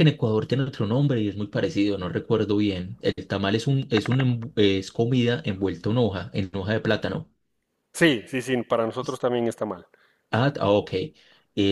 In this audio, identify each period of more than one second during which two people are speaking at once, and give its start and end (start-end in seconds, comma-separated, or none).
none